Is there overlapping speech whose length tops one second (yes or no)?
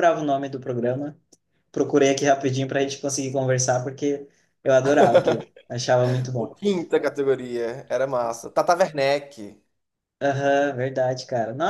no